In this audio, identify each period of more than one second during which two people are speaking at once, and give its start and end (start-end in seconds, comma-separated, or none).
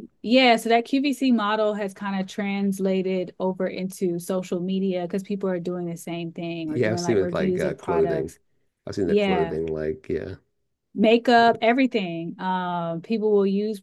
6.7-8.3